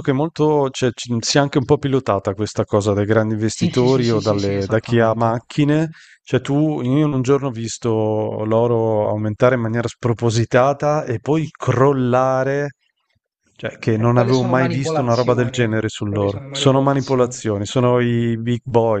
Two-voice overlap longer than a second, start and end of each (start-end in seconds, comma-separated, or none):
3.5-5.4, 13.9-17.4